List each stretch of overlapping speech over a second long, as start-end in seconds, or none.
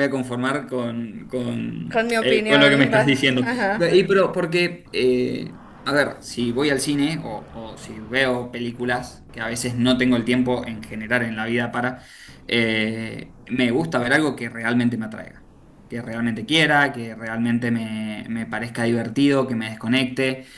1.9-3.4